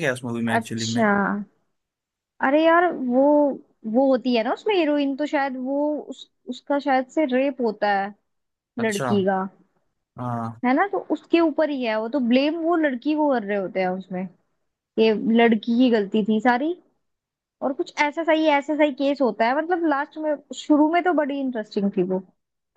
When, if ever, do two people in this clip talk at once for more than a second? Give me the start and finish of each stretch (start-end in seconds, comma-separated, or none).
none